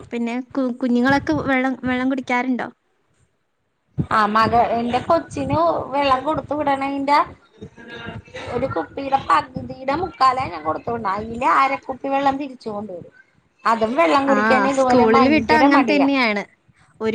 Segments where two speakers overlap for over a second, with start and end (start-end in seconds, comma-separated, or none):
14.3-16.1